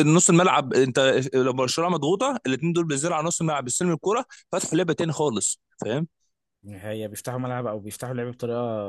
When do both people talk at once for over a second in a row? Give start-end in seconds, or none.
none